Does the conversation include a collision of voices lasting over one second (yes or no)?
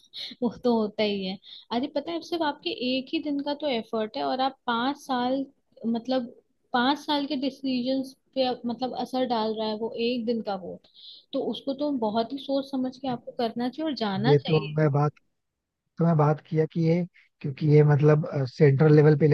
no